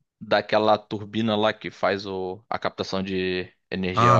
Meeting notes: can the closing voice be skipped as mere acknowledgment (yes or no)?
no